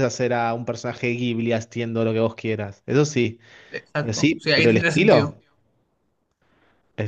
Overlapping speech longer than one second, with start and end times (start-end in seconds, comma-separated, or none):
4.0-5.3